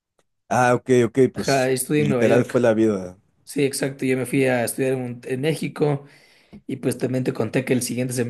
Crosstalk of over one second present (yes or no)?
yes